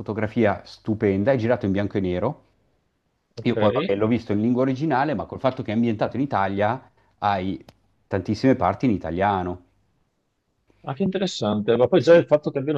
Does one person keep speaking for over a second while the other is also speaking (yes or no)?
no